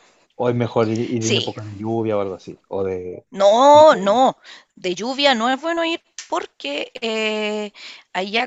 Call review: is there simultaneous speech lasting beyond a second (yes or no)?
no